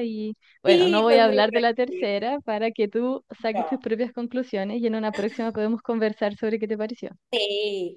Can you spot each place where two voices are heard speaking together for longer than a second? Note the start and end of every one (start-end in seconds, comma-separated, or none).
0.6-2.1